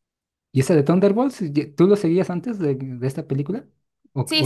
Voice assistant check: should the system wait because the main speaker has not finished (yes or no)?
no